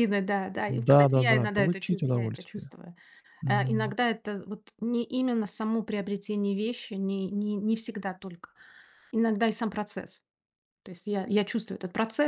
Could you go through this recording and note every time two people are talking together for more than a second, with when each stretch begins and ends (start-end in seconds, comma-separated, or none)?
0.7-2.7